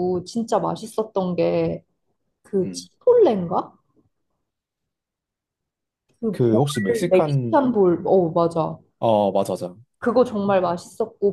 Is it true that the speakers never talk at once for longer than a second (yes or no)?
no